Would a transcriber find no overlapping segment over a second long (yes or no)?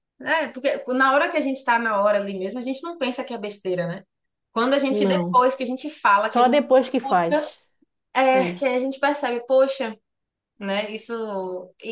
no